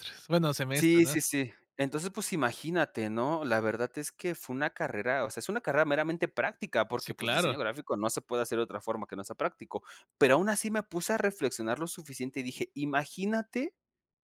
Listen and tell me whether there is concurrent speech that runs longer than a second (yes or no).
no